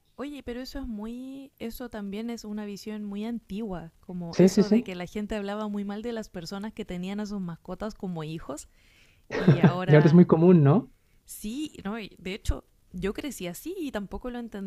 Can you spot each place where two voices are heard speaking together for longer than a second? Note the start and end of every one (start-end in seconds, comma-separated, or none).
none